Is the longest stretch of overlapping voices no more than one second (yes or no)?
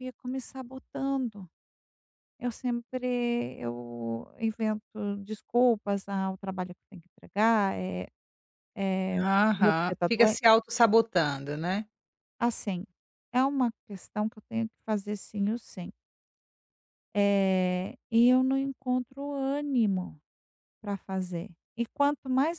no